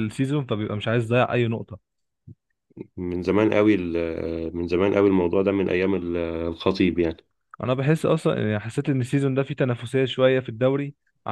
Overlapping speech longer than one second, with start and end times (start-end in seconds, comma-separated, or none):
none